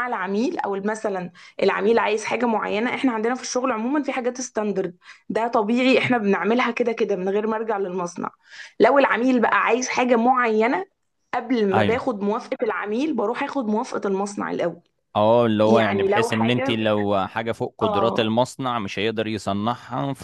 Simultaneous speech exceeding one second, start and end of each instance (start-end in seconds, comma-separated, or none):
15.7-16.9